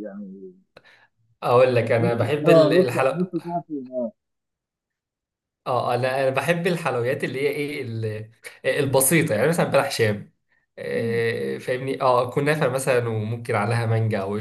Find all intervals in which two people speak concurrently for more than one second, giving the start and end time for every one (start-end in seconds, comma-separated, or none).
2.0-3.3